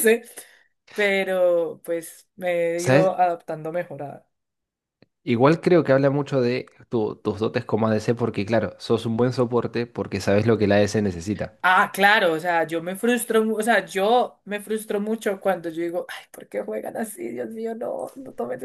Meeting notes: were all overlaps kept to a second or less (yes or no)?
yes